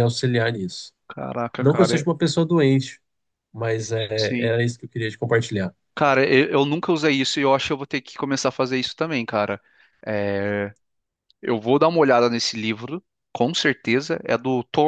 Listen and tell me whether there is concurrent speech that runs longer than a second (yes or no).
no